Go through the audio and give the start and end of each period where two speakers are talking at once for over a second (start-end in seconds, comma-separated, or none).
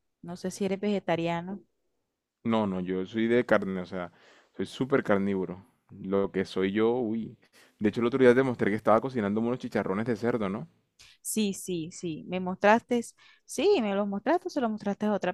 none